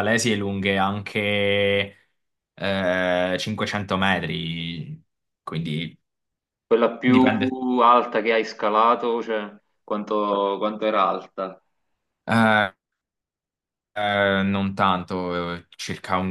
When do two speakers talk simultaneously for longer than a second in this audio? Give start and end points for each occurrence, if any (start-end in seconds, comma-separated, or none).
none